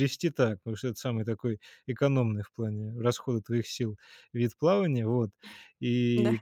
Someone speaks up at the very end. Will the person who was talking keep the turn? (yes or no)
yes